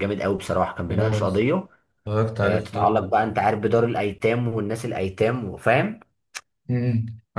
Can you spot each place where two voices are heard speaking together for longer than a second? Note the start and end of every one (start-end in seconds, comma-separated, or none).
none